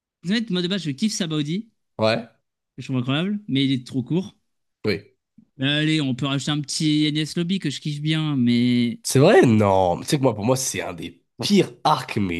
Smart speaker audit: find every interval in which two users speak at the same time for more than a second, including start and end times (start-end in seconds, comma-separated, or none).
none